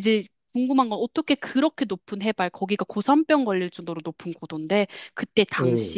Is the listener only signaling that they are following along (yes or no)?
yes